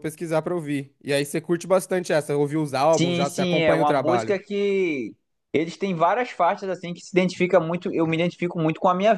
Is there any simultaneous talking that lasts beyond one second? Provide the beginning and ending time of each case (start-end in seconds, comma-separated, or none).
3.0-4.3